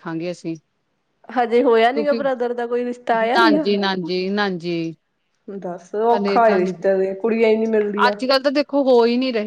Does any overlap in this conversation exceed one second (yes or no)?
no